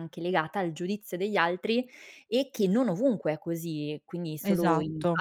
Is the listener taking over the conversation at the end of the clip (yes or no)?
no